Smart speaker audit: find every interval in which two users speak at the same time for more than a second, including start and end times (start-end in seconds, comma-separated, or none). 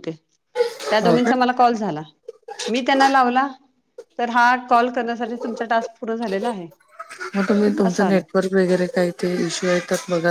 none